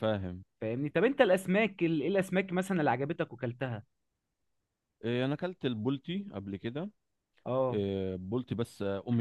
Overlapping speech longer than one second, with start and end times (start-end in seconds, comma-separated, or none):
none